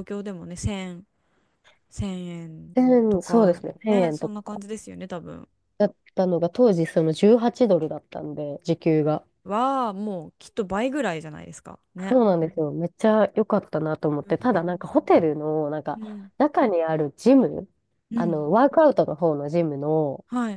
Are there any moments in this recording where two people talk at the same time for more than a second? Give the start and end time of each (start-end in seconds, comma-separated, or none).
2.8-4.6